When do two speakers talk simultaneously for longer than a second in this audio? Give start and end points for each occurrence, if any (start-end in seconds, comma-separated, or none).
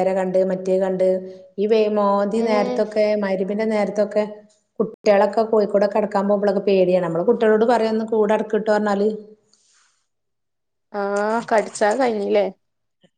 none